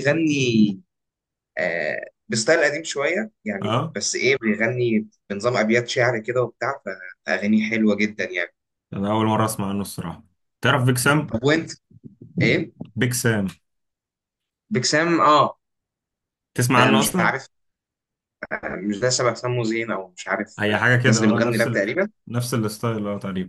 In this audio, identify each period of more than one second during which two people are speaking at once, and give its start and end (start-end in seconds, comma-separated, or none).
20.6-21.9